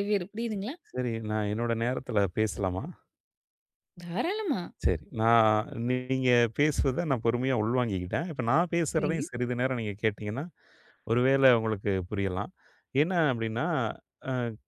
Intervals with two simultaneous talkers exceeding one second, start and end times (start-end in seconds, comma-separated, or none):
none